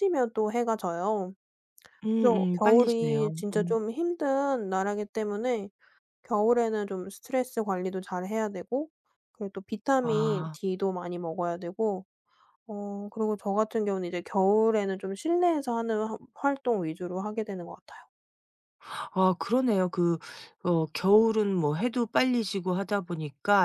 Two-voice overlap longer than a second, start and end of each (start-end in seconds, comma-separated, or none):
2.1-3.8